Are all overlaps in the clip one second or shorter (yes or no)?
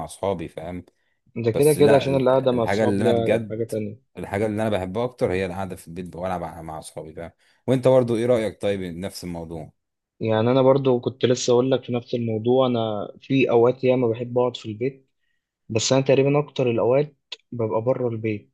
no